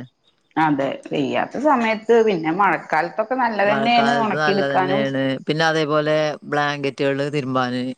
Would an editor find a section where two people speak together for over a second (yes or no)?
yes